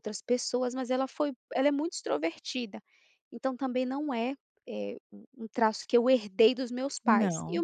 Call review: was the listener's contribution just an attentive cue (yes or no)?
yes